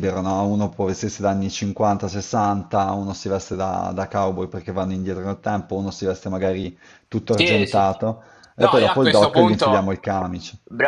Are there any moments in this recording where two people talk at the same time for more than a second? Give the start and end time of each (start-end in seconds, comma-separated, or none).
8.6-9.9